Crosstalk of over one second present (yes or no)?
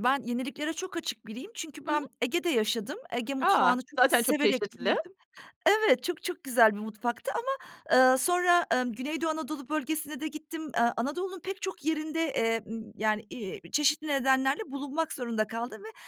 yes